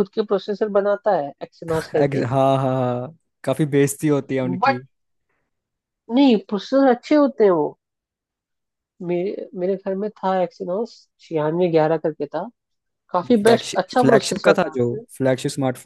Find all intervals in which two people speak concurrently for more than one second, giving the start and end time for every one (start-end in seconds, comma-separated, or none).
13.2-15.0